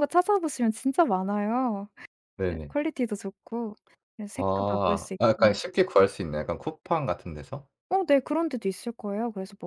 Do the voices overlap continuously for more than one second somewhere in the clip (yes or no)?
yes